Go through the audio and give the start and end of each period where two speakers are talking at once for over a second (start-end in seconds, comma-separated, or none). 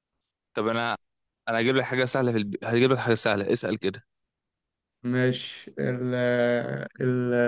none